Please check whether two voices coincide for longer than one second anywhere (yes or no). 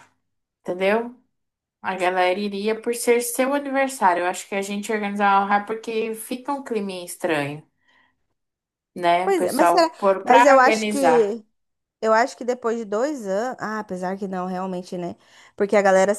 yes